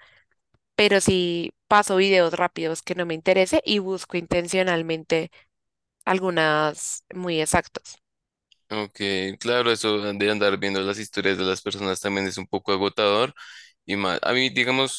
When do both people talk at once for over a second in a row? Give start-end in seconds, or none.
none